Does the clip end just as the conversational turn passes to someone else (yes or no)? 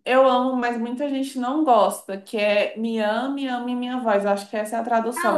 yes